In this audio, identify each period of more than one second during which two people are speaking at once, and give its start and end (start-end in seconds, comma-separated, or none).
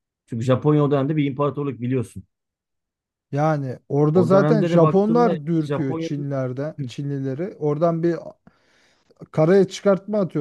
4.1-6.3